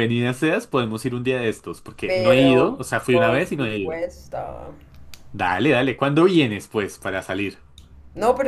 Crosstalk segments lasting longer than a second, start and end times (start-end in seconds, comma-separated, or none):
2.0-4.0